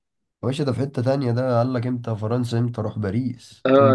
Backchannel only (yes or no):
no